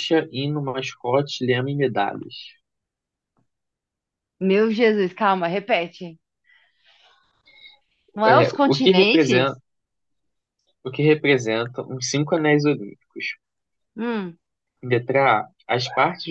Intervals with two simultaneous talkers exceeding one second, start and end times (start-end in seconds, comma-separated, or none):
8.3-9.5